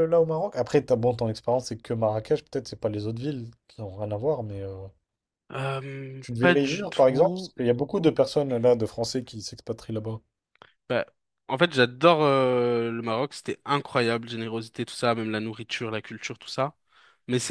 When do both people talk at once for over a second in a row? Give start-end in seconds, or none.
6.2-7.5